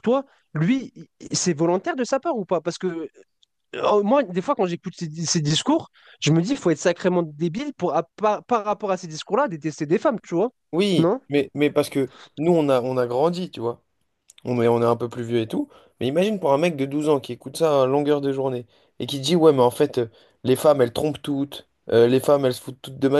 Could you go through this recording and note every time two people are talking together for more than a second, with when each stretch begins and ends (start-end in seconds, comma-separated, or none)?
none